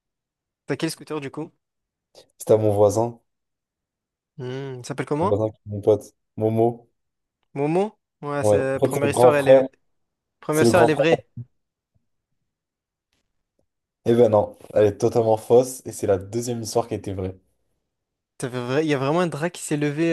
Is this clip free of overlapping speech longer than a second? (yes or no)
no